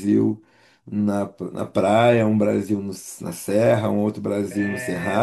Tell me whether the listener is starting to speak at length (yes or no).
no